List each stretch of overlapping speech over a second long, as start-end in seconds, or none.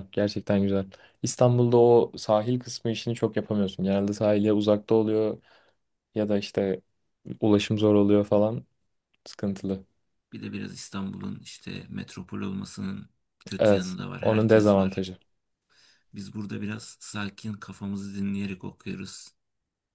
13.6-15.0